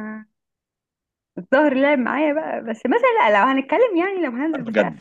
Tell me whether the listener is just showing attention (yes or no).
no